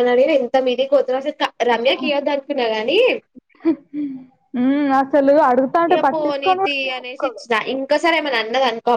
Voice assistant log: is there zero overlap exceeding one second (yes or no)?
no